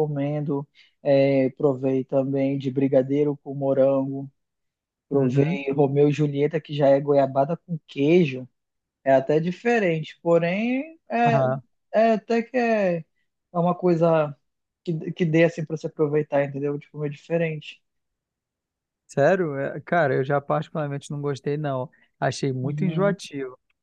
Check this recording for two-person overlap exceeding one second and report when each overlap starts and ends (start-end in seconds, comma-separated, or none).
none